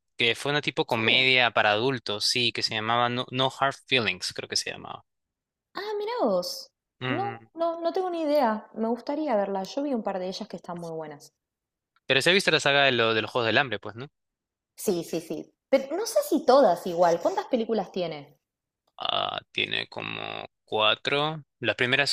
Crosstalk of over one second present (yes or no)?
no